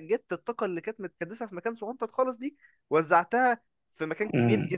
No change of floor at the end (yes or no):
no